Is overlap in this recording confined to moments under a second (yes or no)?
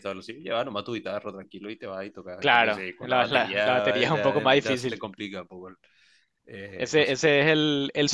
no